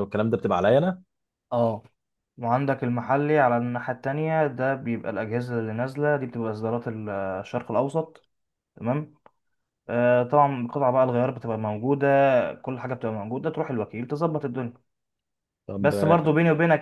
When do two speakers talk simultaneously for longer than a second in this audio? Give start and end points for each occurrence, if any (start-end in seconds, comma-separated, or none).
none